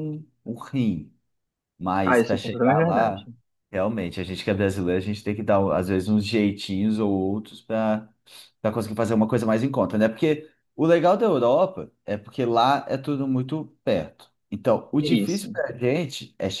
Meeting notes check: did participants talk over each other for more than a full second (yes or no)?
yes